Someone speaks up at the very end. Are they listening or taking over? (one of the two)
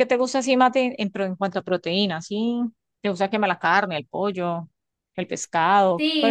taking over